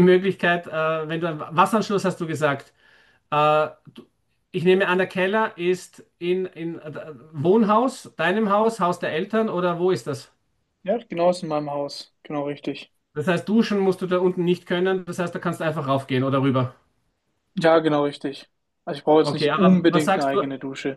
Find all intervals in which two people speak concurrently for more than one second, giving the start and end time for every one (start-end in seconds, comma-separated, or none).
19.2-20.4